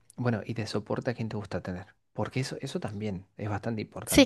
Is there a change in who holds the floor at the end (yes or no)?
yes